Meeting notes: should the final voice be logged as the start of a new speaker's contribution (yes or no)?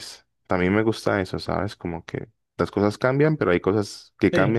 yes